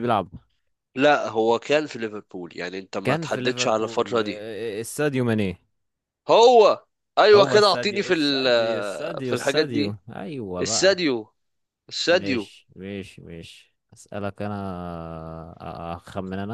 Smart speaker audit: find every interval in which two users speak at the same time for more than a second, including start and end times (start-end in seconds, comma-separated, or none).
3.0-4.4, 7.3-10.0